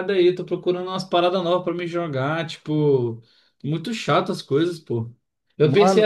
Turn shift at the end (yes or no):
no